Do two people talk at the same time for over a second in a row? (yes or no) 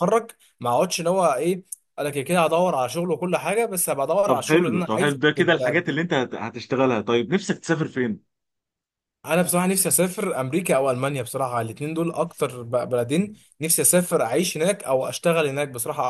yes